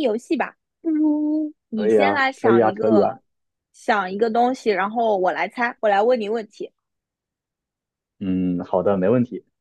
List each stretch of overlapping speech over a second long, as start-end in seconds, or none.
1.7-3.2